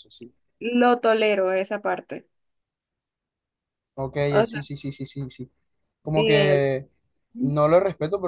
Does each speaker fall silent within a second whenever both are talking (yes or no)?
yes